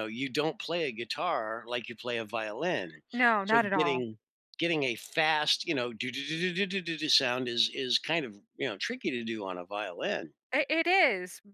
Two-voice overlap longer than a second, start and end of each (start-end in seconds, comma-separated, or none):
none